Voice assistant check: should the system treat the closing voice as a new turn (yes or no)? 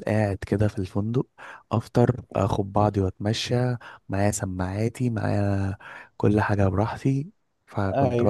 no